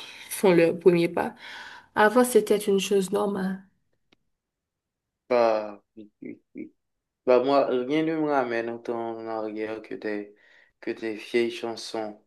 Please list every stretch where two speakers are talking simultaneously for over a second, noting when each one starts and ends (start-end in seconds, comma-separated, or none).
none